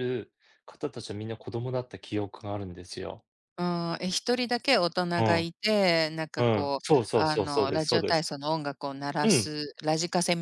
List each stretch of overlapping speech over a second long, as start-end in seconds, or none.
6.4-8.2